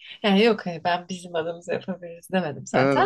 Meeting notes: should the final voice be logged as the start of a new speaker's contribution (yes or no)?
no